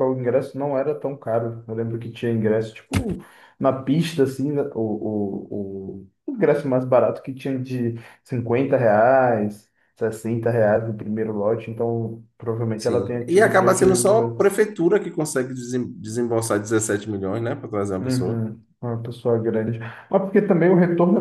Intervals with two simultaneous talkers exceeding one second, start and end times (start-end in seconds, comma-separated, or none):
12.8-14.6